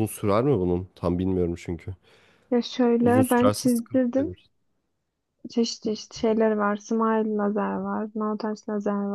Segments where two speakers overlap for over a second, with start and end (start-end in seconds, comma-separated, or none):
3.0-4.3